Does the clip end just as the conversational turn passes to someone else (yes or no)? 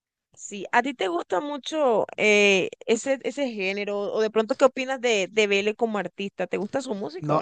yes